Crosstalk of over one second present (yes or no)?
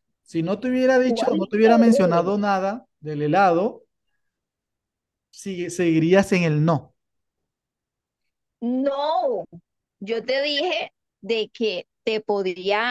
yes